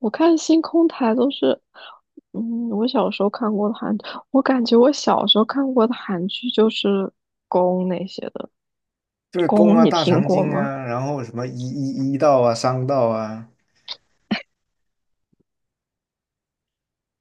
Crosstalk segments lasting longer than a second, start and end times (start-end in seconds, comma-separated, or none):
9.5-10.7